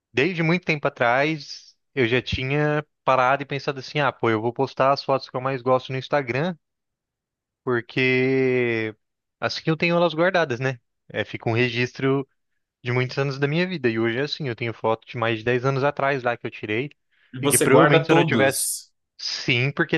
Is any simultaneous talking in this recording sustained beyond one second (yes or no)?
yes